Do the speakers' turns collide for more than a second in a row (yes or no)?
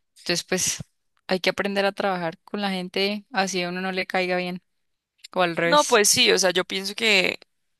no